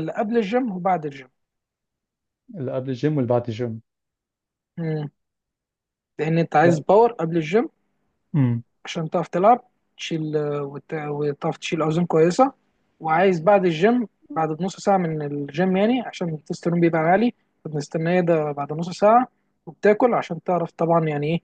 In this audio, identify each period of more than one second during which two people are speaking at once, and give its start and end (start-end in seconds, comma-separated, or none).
none